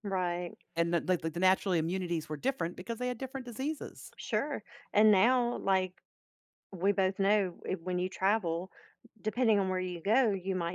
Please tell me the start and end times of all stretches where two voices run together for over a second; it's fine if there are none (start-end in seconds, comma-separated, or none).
none